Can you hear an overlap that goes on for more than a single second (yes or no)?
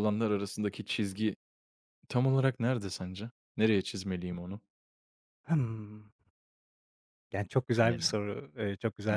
no